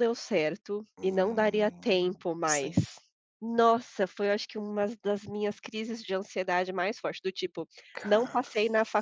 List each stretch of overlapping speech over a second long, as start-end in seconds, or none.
0.9-2.7